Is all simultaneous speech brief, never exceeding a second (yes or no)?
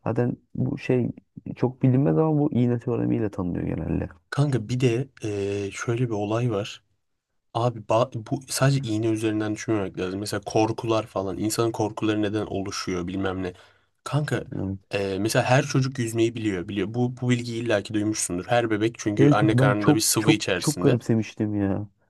no